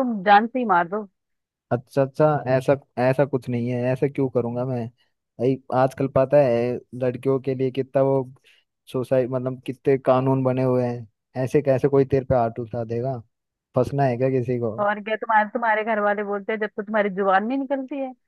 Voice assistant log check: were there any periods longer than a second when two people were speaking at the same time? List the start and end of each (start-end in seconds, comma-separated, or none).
none